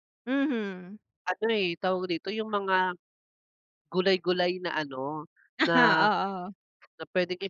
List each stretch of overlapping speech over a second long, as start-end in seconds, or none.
none